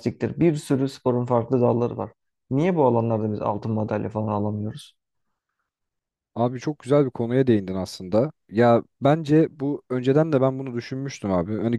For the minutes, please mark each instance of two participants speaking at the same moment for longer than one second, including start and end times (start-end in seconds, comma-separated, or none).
none